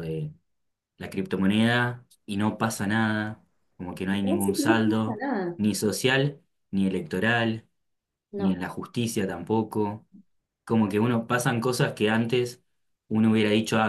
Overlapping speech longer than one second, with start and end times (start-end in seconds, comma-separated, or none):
4.1-5.6